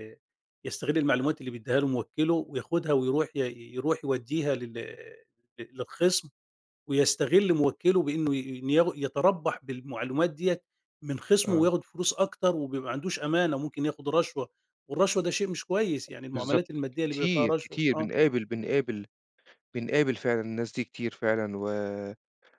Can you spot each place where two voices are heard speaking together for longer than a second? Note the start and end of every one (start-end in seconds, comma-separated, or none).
16.3-18.1